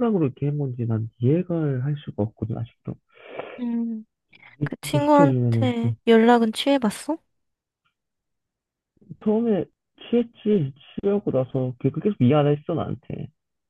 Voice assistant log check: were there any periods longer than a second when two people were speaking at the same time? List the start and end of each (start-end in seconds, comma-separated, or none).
4.6-6.0